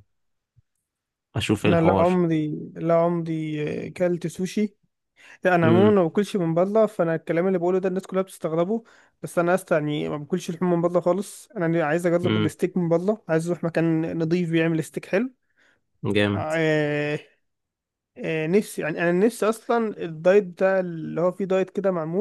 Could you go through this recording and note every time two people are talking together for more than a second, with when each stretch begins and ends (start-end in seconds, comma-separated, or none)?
none